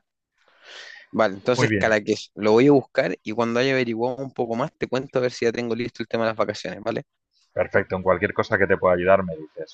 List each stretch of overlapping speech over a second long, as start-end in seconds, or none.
none